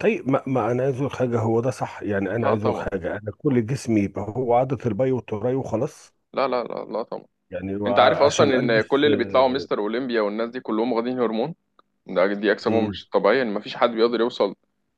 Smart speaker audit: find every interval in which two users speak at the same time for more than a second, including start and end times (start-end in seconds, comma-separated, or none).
7.9-9.7